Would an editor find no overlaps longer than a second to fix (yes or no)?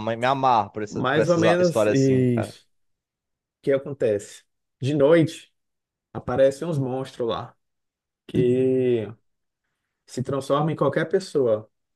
no